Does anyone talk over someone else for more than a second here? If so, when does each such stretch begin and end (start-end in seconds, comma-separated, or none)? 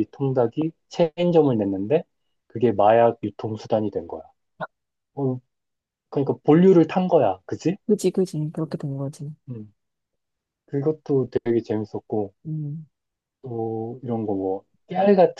none